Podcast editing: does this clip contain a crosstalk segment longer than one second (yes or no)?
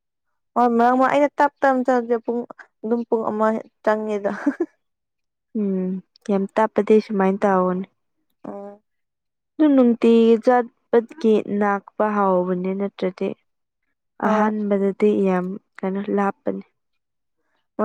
no